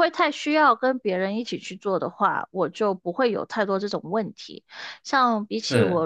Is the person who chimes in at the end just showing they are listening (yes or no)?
yes